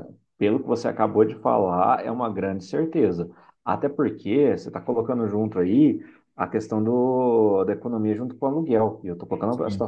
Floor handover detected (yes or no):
no